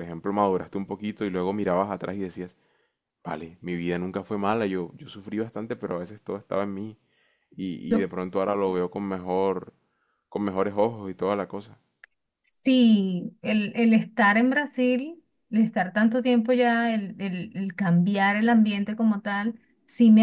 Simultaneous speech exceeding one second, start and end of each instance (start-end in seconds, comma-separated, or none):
none